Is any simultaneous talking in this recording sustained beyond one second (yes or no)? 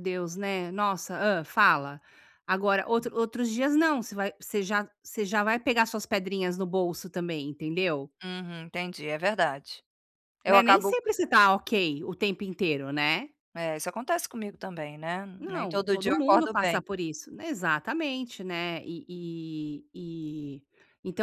yes